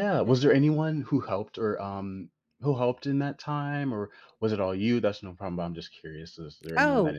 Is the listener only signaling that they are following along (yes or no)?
no